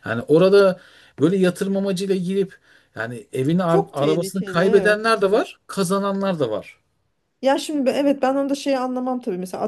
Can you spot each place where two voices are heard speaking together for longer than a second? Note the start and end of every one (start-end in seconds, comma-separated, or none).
3.7-5.0